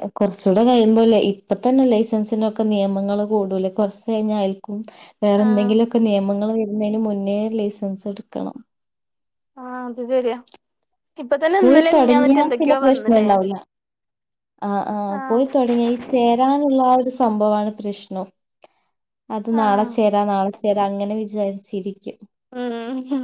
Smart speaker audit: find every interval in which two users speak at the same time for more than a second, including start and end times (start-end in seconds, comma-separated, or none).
11.6-13.3